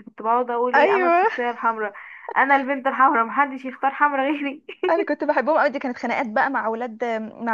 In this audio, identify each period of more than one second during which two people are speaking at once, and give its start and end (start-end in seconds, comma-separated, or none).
none